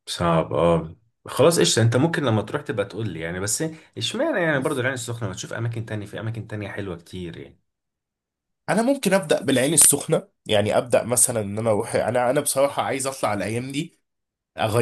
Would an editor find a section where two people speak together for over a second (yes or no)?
no